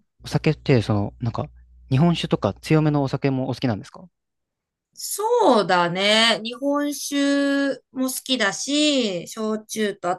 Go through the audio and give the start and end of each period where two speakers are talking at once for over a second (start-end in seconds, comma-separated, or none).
none